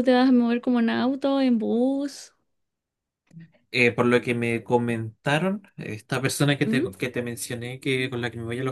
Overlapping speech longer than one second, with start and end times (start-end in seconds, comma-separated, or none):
none